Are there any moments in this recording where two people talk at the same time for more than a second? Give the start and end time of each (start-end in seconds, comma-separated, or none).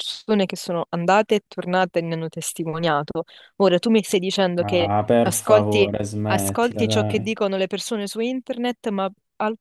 4.6-7.3